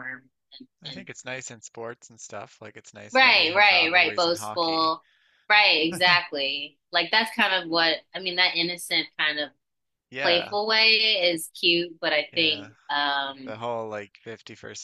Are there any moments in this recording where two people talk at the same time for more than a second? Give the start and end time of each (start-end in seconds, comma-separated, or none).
3.1-5.0